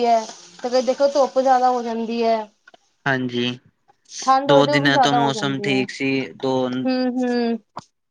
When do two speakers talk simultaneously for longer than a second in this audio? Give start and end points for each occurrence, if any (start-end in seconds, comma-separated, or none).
4.5-5.8